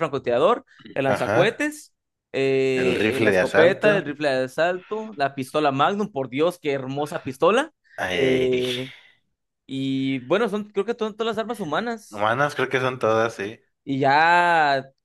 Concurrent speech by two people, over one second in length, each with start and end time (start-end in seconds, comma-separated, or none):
2.8-4.1